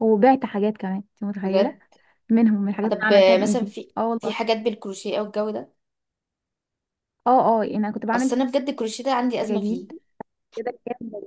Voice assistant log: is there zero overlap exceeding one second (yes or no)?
no